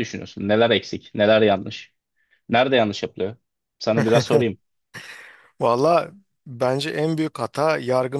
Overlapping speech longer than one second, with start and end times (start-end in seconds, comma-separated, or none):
none